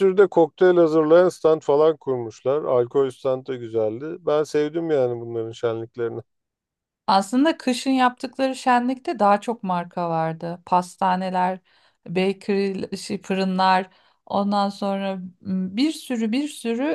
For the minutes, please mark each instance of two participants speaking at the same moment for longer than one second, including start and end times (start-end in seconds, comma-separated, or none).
none